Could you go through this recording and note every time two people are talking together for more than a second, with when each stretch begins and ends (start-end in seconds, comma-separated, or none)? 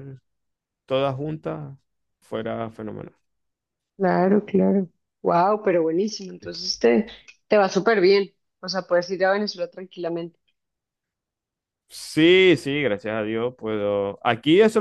none